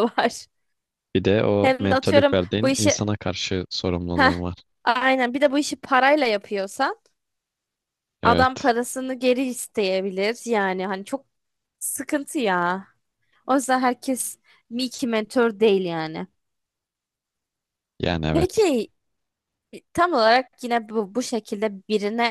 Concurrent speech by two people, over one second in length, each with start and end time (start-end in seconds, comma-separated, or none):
1.6-3.0